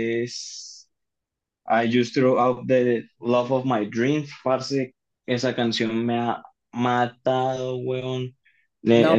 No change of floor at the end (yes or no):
no